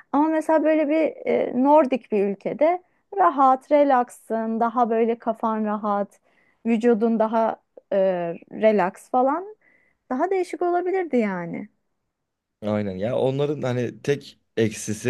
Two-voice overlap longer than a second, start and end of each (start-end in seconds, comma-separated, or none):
none